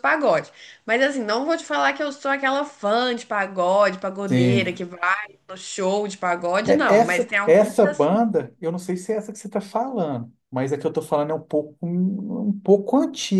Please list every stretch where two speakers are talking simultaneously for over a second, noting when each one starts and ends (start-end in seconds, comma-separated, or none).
6.7-8.2